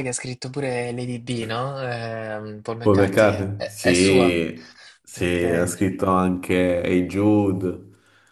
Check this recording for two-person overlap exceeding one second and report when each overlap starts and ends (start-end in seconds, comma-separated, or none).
2.8-4.3